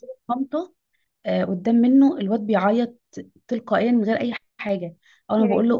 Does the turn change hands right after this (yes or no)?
no